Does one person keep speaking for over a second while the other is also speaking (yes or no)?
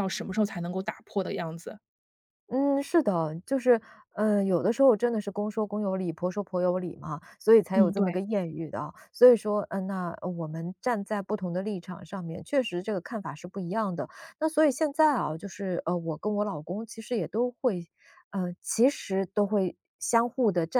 no